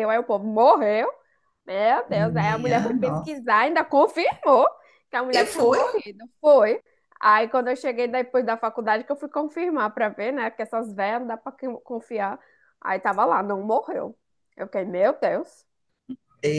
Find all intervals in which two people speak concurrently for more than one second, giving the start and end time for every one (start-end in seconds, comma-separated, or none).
2.1-3.4